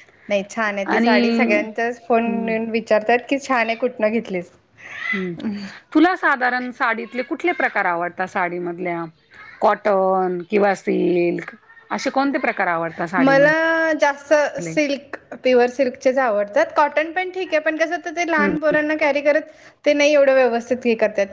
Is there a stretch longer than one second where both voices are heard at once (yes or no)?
no